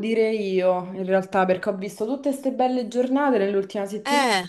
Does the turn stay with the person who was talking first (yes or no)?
yes